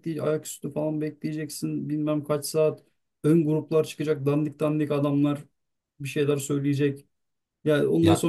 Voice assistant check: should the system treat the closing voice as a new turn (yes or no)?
no